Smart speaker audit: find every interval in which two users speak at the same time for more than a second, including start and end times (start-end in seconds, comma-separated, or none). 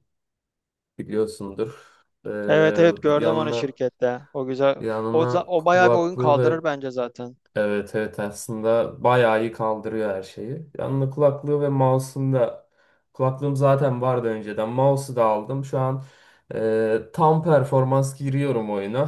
4.8-6.7